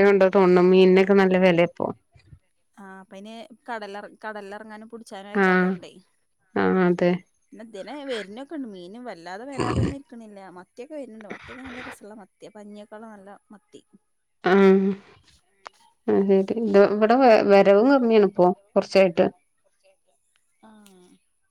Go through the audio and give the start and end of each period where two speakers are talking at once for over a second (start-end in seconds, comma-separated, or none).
none